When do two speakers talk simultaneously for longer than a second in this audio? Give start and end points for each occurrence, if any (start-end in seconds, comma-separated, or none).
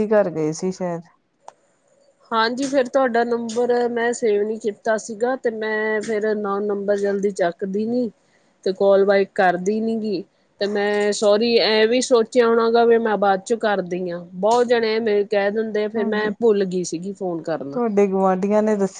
none